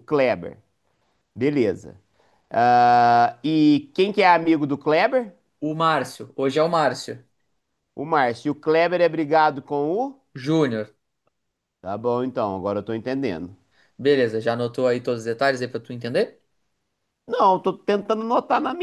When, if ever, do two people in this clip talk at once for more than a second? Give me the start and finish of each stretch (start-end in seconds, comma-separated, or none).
none